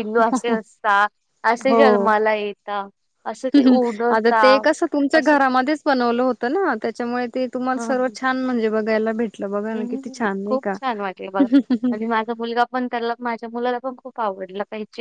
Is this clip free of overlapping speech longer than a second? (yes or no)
yes